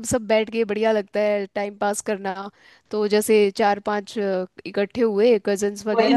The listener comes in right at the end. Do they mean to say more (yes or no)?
yes